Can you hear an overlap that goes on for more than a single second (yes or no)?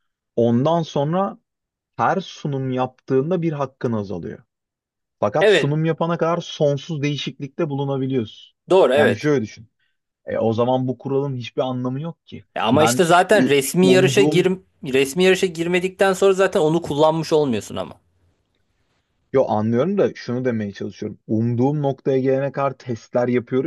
yes